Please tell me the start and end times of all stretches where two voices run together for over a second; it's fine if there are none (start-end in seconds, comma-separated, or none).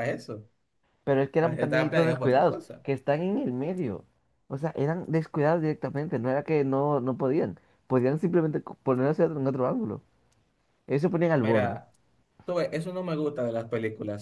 1.4-2.9